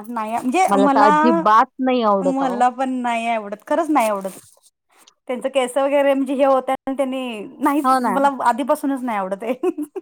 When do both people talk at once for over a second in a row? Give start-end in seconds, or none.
none